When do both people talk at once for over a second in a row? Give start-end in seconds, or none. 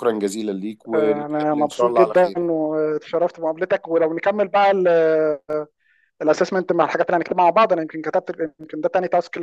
0.9-2.4